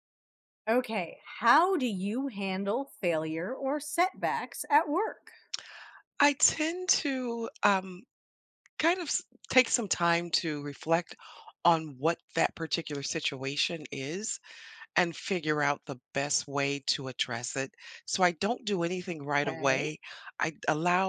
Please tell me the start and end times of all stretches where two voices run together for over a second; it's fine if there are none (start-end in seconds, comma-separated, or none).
none